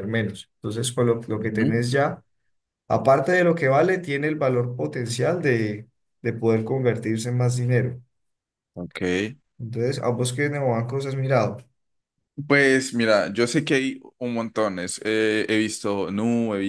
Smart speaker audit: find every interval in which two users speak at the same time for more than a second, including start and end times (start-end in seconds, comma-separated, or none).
none